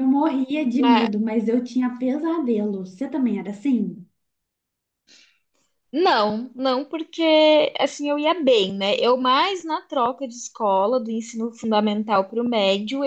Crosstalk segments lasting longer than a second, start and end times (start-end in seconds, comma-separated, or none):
none